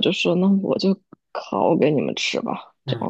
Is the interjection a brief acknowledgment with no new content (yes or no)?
no